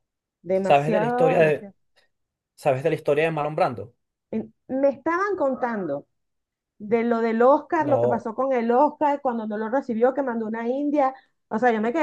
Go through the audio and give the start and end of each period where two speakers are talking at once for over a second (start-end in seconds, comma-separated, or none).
0.5-1.7